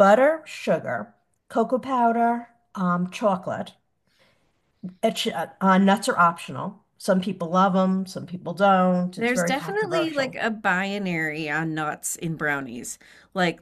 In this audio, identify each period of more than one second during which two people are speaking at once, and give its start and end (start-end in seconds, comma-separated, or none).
9.2-10.4